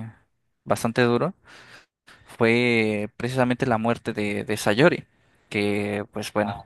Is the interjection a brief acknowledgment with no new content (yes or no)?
yes